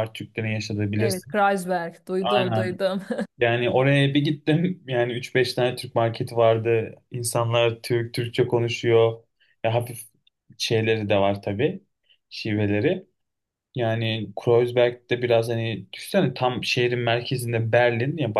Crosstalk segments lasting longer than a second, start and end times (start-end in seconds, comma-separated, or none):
none